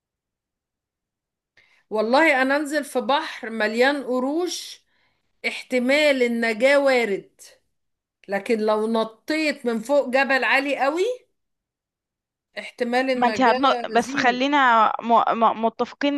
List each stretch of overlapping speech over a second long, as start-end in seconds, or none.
13.1-14.4